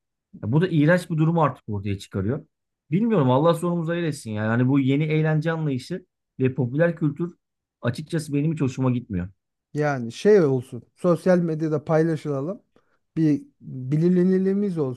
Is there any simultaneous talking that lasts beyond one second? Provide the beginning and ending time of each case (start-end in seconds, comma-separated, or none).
none